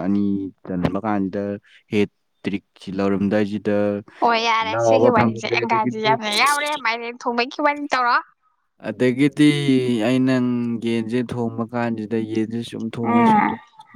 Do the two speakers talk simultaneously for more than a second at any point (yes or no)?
yes